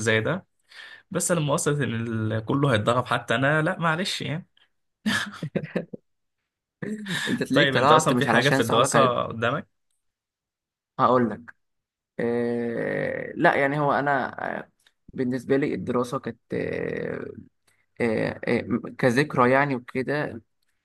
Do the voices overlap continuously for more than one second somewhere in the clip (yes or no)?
yes